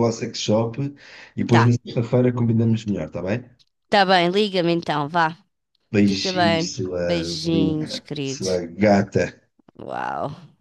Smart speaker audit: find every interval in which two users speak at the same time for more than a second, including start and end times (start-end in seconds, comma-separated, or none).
6.1-8.5